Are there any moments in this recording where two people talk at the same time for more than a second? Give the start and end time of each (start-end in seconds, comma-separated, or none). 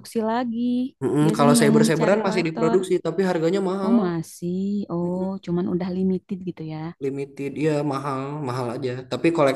1.2-2.8